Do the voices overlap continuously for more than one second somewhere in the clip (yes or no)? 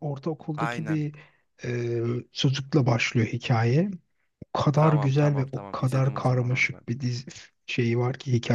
yes